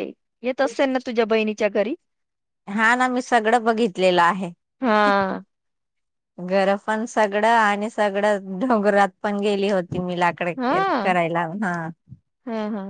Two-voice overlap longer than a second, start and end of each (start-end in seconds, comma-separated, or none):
none